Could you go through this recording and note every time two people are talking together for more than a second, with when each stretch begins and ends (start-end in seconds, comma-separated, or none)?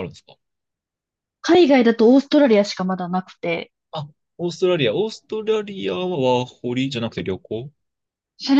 none